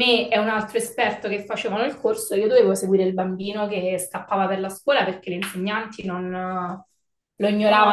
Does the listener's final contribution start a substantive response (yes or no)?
yes